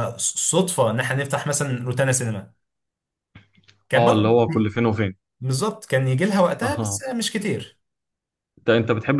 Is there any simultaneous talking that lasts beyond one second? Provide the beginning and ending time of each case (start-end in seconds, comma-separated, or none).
none